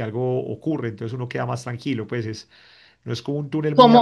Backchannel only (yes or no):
yes